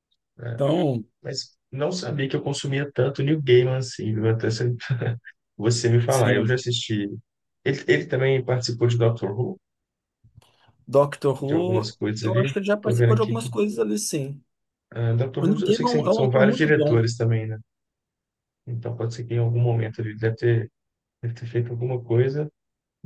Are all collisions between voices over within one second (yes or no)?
no